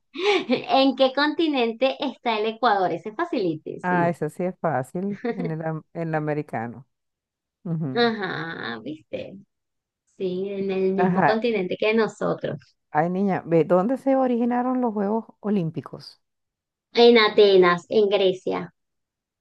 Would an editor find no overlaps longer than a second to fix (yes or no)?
yes